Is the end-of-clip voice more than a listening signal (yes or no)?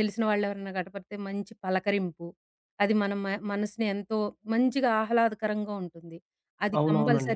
no